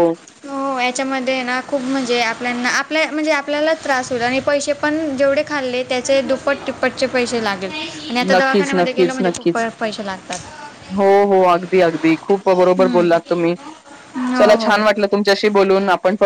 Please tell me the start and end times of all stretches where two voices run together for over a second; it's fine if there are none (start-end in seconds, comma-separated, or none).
8.3-9.7